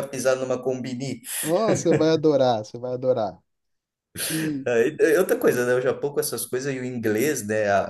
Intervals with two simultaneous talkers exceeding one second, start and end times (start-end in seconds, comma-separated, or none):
none